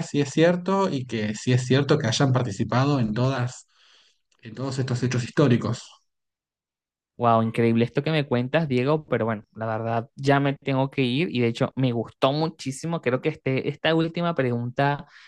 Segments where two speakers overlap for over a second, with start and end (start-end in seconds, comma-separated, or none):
none